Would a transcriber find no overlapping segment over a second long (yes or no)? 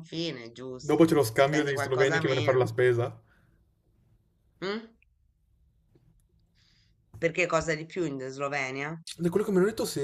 no